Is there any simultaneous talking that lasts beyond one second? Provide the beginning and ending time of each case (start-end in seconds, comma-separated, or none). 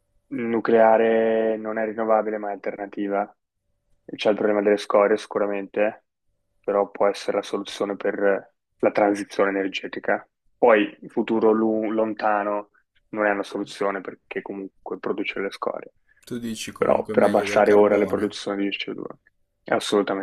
16.8-18.4